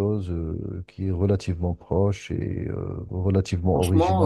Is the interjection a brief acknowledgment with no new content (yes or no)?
yes